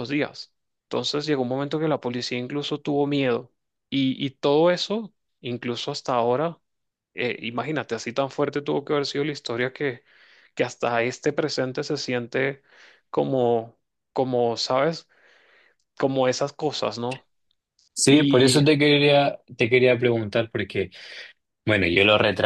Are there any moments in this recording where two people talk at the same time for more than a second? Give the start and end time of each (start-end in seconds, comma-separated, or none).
none